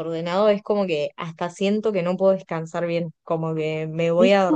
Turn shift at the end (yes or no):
no